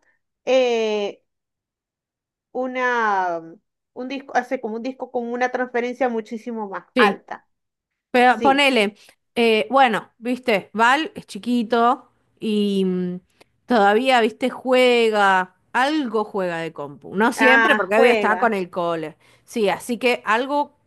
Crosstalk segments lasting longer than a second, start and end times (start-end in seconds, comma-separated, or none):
17.4-18.6